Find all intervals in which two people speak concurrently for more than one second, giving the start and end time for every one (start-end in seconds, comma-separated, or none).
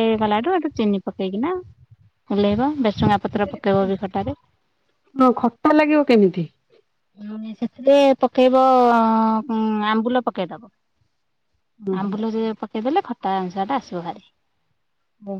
none